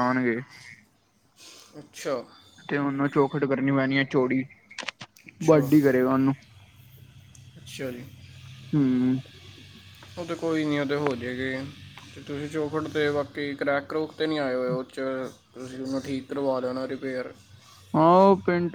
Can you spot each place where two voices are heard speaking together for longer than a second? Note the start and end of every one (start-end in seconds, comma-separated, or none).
none